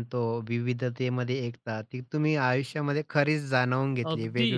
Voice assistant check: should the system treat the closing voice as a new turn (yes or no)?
yes